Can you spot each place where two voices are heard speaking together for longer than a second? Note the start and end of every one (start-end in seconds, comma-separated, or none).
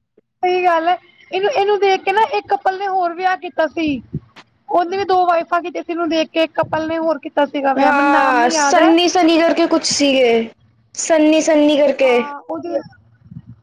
none